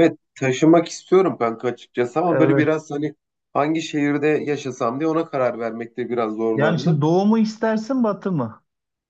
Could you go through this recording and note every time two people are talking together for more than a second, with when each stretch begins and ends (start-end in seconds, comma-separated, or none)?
none